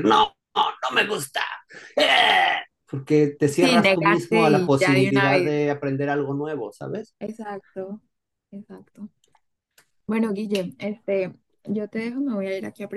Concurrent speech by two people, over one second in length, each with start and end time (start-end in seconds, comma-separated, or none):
3.6-5.5